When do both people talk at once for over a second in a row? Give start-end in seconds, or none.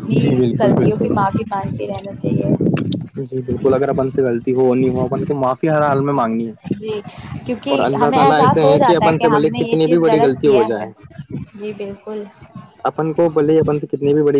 7.7-10.9